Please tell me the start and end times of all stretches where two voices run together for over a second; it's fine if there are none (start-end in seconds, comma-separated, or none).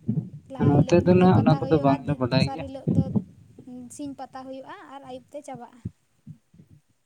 0.7-2.7